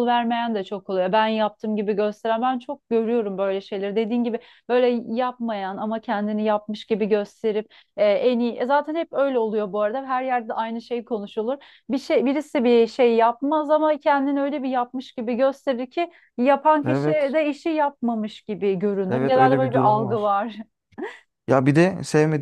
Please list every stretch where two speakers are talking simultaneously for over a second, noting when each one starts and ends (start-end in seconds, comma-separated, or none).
19.1-20.3